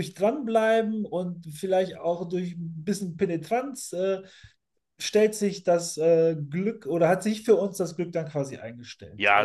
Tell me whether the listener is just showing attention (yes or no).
no